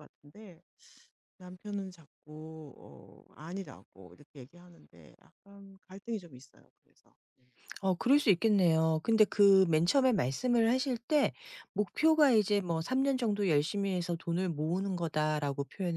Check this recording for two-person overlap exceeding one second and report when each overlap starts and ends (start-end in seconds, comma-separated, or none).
none